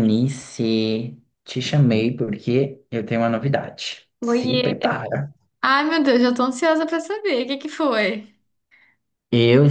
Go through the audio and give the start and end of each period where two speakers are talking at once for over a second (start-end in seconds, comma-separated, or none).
none